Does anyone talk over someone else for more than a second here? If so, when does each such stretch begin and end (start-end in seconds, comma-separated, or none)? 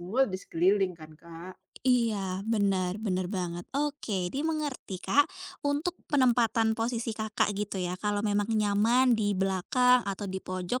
none